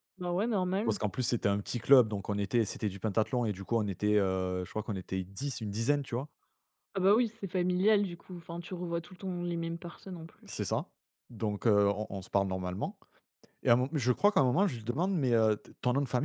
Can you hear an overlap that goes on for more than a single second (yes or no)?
no